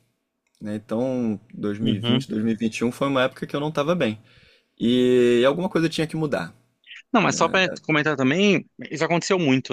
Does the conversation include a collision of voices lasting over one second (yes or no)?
no